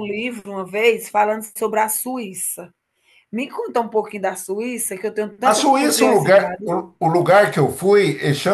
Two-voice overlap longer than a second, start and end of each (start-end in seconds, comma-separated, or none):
5.4-6.7